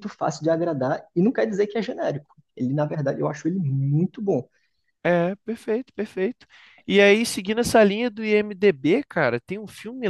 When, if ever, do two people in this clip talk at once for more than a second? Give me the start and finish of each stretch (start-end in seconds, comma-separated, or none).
none